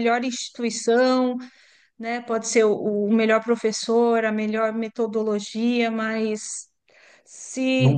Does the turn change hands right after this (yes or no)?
no